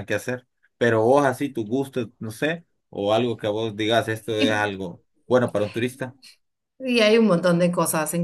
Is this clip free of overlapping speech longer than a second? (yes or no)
yes